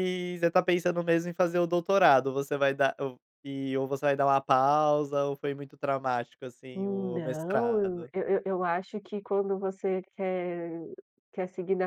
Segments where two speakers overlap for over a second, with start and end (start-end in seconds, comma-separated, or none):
6.8-8.1